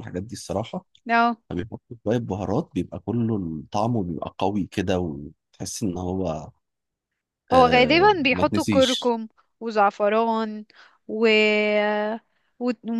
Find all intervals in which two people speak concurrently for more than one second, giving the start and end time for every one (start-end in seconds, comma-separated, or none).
7.5-9.2